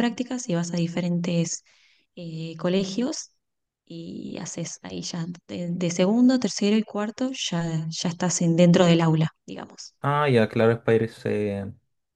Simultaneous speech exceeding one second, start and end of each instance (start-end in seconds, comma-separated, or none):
none